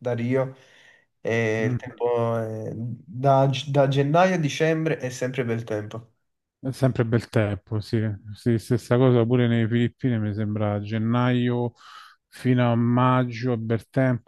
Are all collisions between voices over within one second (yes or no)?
yes